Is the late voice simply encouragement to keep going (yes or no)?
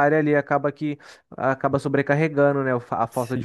no